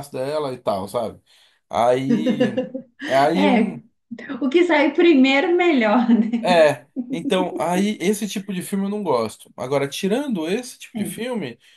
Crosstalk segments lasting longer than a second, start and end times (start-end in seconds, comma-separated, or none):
none